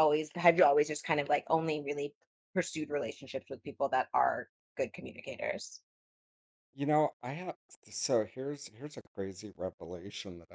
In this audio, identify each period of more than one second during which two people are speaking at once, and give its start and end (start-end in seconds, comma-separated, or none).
none